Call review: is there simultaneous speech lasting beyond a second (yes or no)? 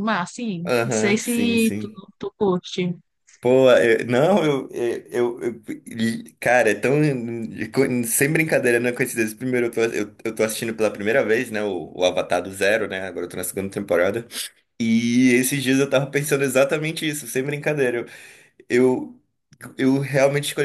yes